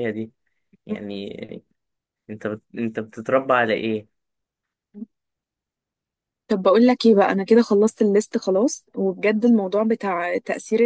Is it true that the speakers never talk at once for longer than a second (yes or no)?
yes